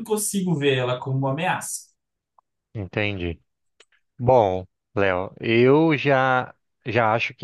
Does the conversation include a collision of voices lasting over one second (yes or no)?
no